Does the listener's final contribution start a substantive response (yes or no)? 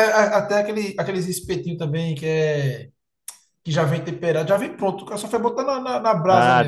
yes